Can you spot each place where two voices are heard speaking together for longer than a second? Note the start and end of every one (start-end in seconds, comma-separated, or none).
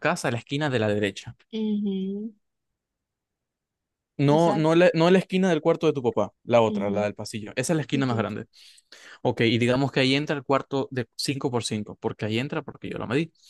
none